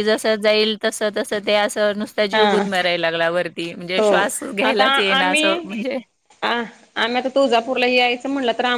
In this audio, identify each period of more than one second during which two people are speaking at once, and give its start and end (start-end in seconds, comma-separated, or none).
none